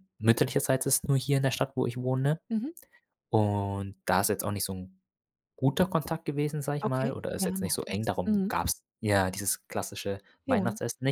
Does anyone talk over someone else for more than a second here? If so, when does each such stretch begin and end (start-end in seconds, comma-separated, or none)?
6.8-8.5